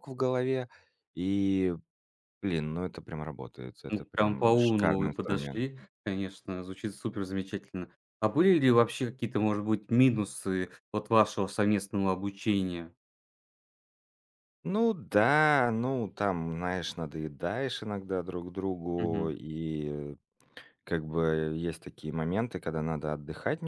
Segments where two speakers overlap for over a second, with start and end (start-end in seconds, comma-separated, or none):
3.9-5.7